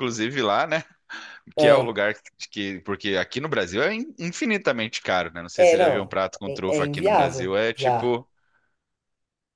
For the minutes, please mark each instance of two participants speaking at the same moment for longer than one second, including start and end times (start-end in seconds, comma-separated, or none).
5.6-8.2